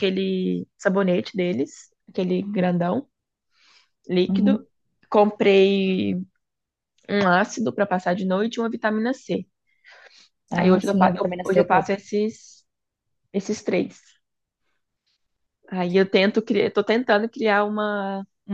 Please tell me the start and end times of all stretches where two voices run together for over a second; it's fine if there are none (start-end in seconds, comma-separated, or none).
10.6-11.9